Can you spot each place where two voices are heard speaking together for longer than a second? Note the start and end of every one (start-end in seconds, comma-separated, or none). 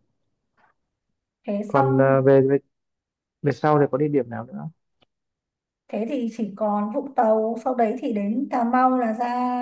none